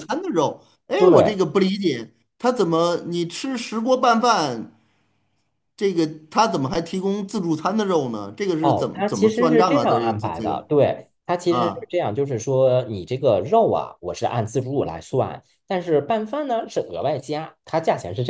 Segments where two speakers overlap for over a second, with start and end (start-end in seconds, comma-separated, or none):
8.6-10.7